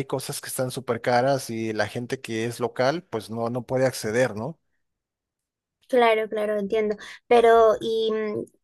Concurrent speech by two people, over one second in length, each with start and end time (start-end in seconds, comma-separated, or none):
none